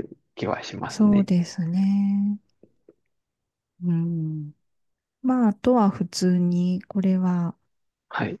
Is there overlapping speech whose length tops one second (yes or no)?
no